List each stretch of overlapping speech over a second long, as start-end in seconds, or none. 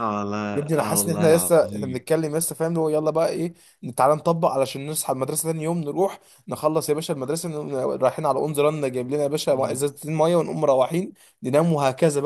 0.9-2.1